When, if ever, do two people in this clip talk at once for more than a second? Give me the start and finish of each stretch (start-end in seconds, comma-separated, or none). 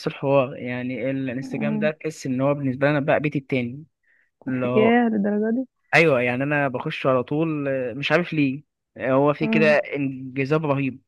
none